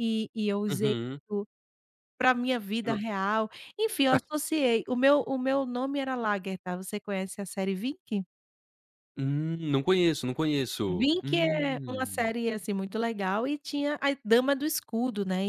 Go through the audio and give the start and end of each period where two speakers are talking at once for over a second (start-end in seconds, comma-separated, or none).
10.9-12.3